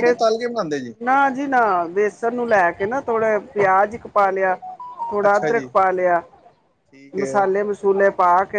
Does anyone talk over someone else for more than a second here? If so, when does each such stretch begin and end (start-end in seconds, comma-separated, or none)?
none